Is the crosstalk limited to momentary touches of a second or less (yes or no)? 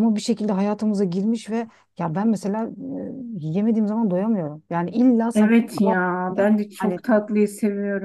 no